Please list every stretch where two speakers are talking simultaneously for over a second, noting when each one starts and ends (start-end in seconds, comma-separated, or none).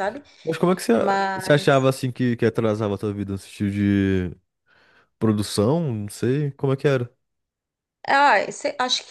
none